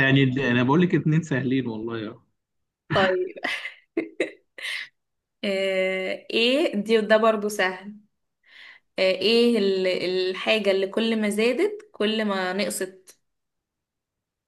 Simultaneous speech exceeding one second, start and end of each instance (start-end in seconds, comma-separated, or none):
none